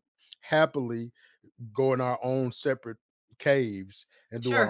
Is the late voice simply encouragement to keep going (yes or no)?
no